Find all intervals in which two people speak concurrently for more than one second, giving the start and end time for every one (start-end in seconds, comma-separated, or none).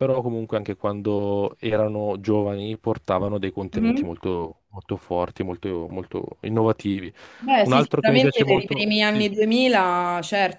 7.6-9.3